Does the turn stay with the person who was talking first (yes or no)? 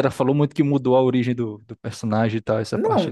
no